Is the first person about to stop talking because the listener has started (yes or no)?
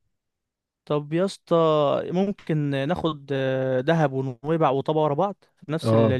yes